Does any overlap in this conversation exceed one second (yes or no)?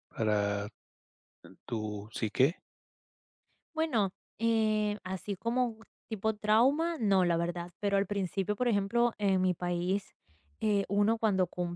no